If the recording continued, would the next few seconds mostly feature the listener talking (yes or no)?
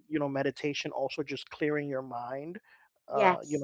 no